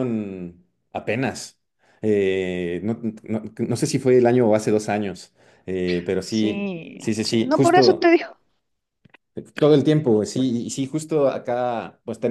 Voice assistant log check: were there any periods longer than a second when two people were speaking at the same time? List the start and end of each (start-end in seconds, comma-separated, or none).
6.2-8.1